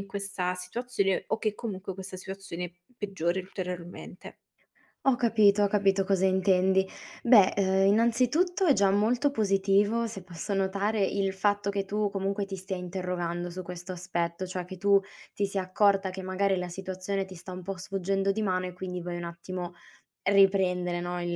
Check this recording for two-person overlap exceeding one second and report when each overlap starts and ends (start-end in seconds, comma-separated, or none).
none